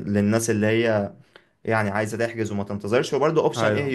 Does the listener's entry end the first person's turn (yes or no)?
no